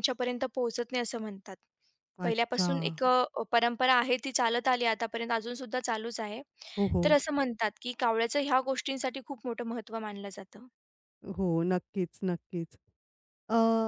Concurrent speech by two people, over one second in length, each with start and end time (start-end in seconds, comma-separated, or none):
none